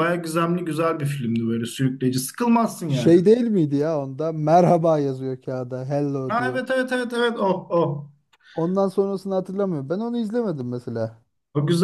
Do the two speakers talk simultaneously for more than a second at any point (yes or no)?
no